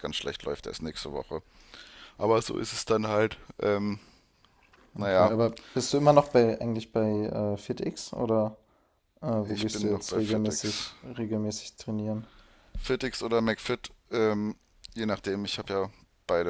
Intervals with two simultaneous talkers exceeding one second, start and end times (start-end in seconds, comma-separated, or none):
9.4-10.9